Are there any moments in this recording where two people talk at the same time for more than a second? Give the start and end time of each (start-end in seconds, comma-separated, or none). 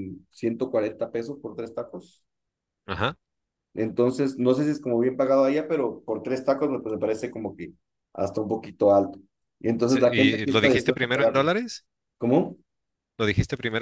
9.8-11.5